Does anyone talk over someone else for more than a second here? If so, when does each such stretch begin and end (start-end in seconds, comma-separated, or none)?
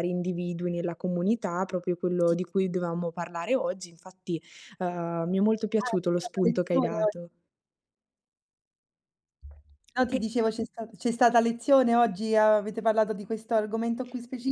5.8-7.1